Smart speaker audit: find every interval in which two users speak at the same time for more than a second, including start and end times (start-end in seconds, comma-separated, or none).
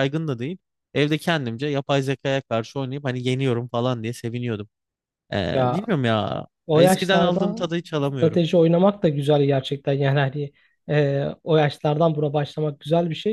6.7-8.6